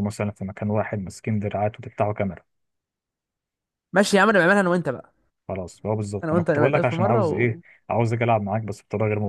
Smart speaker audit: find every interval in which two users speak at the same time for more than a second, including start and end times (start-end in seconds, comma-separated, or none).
6.2-7.5